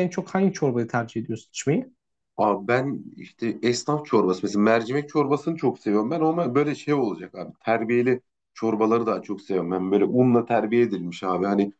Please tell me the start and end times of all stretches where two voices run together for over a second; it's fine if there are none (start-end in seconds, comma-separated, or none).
none